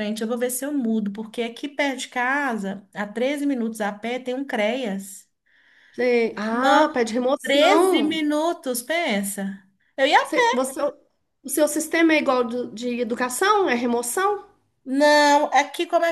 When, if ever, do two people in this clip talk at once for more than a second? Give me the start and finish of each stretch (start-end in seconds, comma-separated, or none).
6.5-8.2